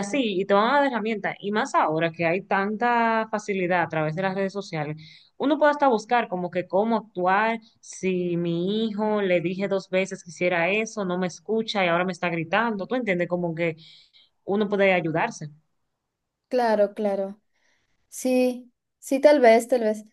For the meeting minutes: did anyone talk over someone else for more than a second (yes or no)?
no